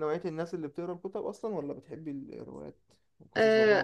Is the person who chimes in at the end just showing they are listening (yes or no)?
no